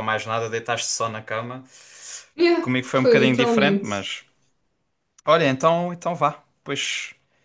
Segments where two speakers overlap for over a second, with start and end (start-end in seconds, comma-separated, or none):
2.6-4.0